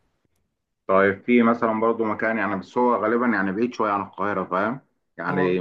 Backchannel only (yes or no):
yes